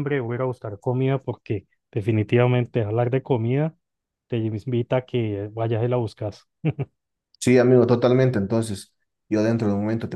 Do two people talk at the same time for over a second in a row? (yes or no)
no